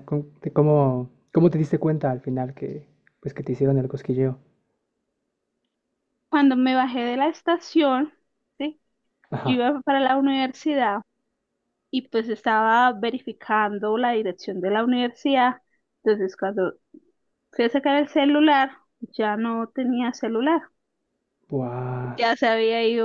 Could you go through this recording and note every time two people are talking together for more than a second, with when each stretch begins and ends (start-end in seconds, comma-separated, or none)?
none